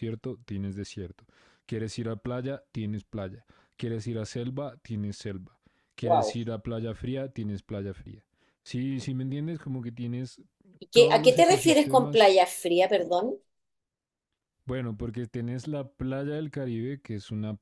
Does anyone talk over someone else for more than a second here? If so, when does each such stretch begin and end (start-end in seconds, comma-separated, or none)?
10.9-12.3